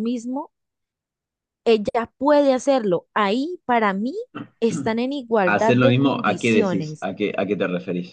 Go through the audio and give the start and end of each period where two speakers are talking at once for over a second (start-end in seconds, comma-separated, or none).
5.4-7.1